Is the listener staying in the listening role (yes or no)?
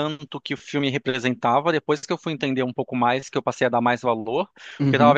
yes